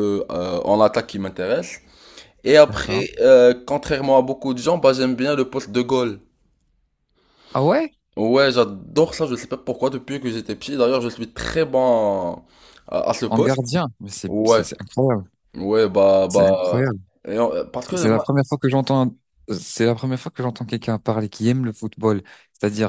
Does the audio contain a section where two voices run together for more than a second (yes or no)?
no